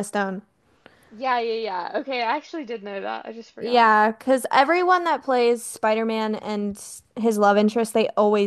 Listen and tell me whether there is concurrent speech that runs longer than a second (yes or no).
no